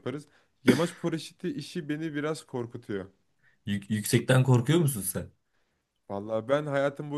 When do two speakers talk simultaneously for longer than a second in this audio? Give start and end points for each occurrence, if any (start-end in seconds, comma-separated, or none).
none